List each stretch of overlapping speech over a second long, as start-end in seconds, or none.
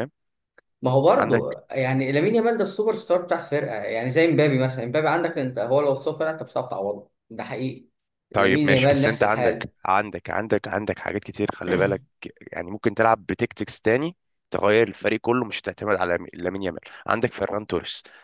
8.3-9.7